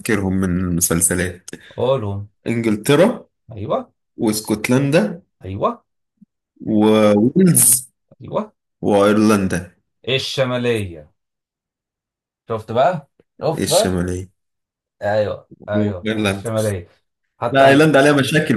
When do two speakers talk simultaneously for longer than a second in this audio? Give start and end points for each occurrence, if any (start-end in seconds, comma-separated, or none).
none